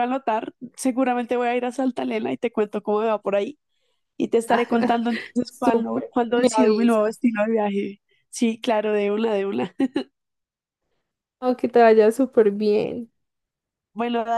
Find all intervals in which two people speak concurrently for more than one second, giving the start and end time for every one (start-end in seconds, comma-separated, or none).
5.5-7.2